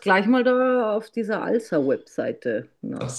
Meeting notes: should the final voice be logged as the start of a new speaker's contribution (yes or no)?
yes